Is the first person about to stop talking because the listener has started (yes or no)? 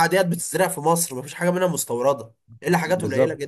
no